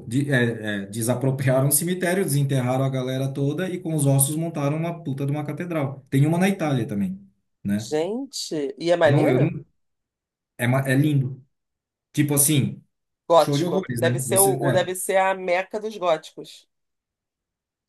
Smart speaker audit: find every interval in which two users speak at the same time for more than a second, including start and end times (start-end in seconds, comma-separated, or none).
13.4-14.9